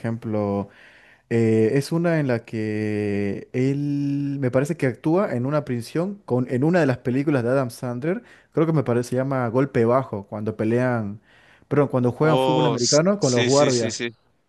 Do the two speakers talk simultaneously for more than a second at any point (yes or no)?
yes